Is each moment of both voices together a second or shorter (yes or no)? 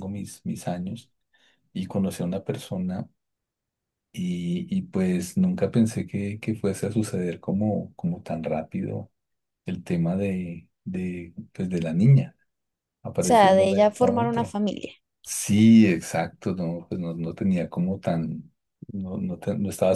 no